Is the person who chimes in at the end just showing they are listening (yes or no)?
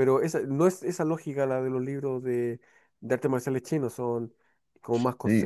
no